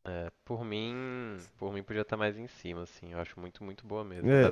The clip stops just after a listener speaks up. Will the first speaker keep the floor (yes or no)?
no